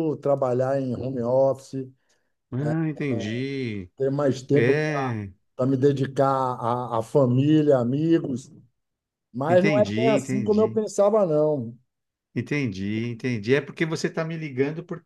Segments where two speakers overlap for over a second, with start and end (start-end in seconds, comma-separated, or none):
9.5-10.8